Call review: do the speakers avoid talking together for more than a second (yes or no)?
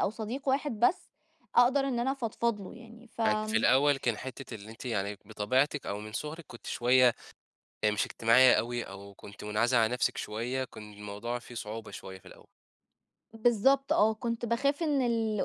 yes